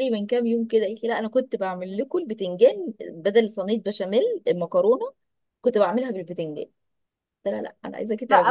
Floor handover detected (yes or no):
yes